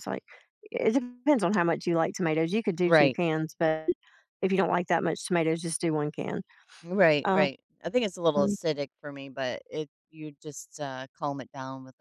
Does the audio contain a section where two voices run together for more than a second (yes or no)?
no